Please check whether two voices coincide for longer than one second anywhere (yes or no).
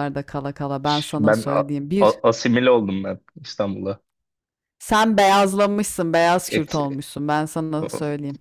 yes